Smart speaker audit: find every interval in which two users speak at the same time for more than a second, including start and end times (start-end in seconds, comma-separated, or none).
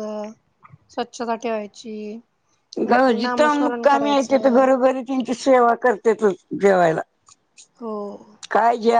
3.2-4.7